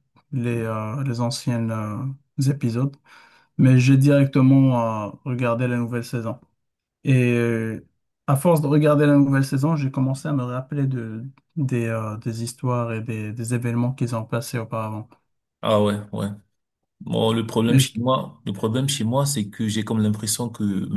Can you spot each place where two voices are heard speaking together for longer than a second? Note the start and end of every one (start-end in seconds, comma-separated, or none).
none